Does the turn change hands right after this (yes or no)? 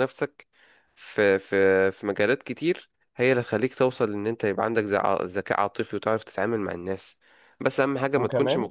no